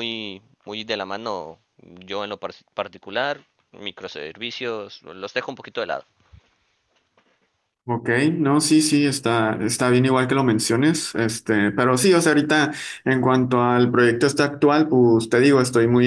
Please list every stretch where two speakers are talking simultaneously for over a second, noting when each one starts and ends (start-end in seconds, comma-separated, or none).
none